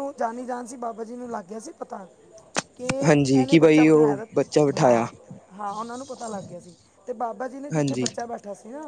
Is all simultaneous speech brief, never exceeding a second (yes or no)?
no